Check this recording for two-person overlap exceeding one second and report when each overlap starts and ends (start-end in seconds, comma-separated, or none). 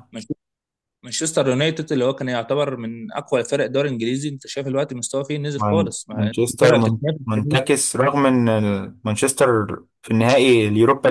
5.5-7.6